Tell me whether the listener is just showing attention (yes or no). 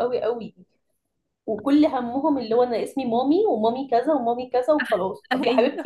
yes